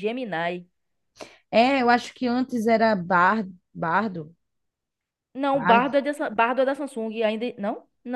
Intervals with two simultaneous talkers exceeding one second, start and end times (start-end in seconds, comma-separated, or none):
none